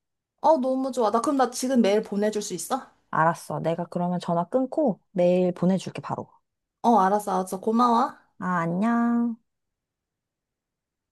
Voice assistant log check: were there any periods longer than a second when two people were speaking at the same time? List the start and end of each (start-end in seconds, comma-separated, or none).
none